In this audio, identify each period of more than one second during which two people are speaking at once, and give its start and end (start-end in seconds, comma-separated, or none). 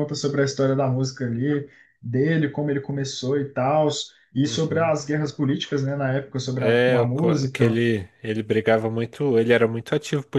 6.5-7.8